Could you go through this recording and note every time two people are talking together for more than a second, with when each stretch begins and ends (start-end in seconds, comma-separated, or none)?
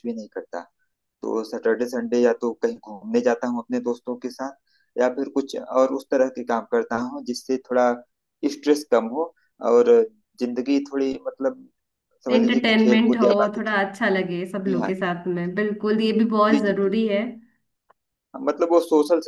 12.3-14.1